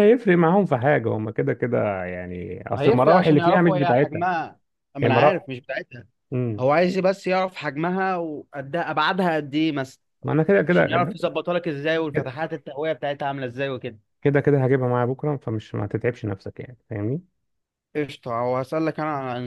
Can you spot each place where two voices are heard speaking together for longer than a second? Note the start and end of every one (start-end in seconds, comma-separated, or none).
2.8-4.2